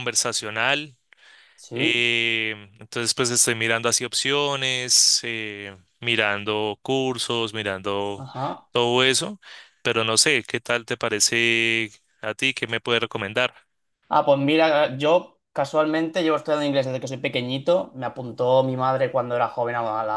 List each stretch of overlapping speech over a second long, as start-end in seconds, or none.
none